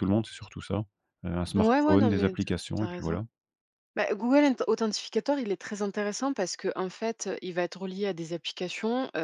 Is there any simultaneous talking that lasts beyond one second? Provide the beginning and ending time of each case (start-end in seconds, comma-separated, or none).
1.6-3.2